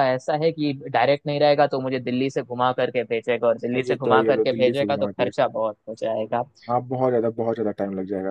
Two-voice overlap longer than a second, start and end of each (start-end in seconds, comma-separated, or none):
3.8-5.3